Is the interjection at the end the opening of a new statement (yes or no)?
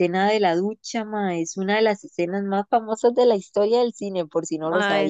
yes